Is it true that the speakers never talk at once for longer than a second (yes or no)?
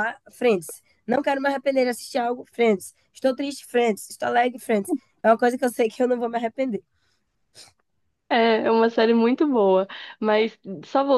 yes